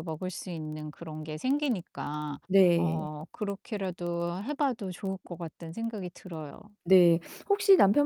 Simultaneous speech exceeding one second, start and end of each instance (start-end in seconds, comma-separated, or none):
none